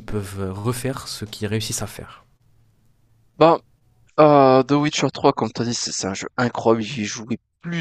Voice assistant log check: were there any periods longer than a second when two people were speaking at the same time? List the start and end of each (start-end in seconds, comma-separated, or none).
none